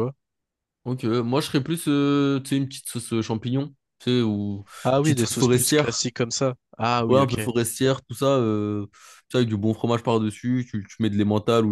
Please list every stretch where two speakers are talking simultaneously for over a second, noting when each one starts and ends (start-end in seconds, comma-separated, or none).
4.8-6.1